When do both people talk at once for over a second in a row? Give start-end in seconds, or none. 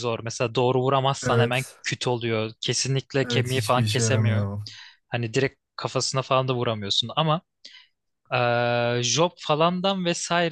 3.2-4.5